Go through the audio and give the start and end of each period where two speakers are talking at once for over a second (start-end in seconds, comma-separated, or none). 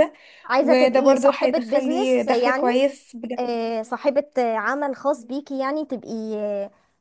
0.6-2.6